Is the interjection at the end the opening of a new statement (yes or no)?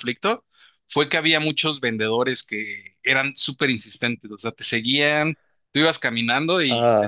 no